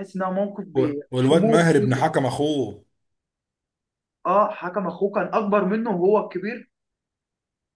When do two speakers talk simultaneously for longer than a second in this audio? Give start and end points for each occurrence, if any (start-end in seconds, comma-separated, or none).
0.8-2.0